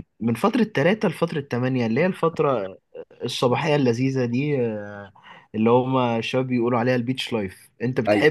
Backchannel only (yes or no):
yes